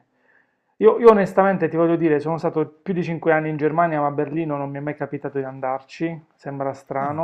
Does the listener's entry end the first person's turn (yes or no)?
no